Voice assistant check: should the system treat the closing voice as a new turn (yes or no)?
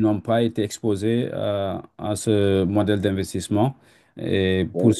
no